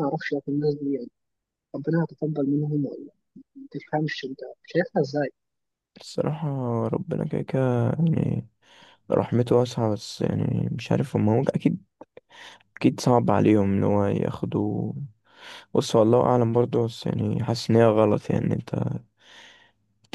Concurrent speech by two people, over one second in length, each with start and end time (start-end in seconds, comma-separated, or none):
none